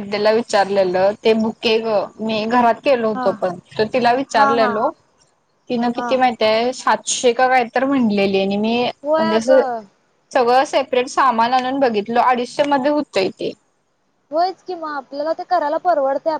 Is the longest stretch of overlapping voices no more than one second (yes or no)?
yes